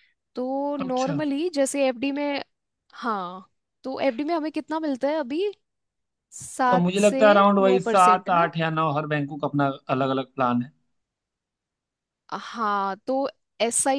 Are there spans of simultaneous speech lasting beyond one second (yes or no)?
yes